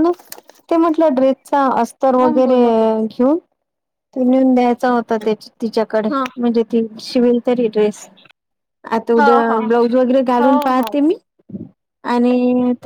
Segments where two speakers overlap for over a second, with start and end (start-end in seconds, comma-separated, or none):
none